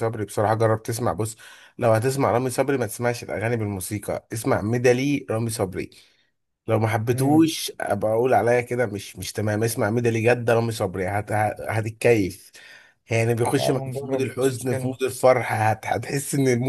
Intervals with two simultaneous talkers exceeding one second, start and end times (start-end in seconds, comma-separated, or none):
13.6-14.9